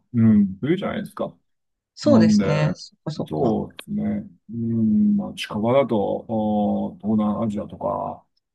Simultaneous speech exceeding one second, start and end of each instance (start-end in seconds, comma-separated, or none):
none